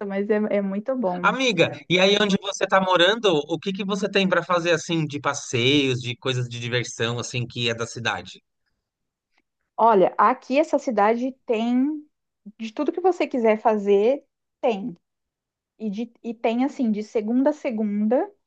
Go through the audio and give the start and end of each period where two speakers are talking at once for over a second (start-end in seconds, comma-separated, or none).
none